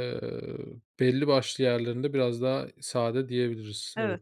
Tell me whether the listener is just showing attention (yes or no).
no